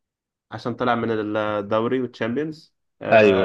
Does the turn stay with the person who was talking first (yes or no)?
yes